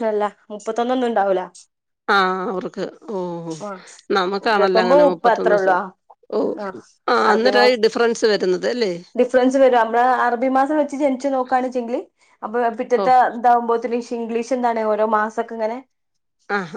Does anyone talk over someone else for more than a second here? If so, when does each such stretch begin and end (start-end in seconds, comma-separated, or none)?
4.5-5.8